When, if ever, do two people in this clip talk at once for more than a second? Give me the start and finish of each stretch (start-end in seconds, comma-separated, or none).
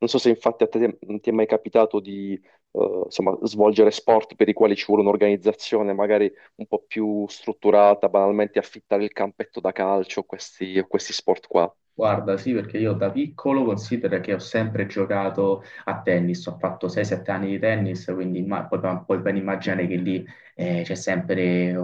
none